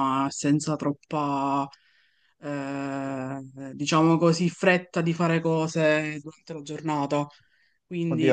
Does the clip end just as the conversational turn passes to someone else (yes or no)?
yes